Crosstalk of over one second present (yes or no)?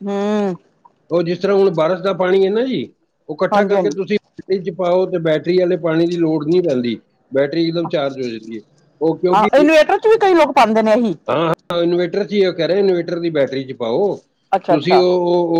no